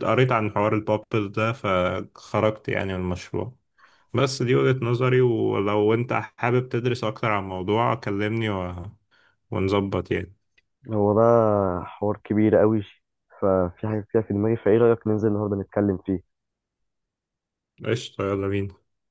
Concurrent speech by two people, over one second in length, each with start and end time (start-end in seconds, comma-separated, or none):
none